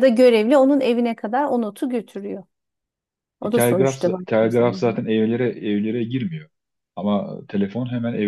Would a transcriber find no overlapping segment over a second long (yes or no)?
no